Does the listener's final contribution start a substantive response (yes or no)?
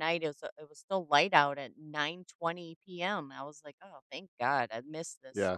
yes